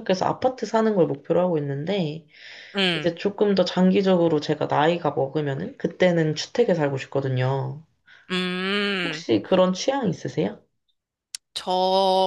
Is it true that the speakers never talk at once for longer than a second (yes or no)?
yes